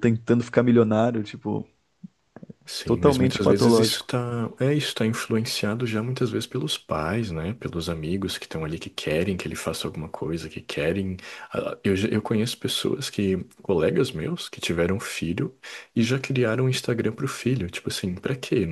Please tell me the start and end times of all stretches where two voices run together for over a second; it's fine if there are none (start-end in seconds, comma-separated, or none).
2.9-4.1